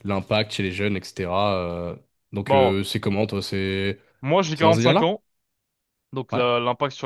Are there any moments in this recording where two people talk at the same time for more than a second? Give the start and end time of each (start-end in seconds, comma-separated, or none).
none